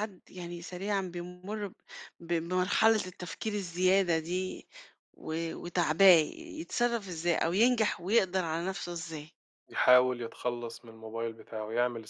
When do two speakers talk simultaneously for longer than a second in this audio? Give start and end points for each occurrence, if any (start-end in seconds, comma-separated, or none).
none